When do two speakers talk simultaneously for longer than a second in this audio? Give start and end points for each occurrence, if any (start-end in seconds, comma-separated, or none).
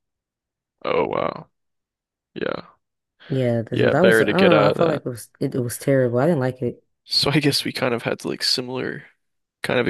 3.7-5.0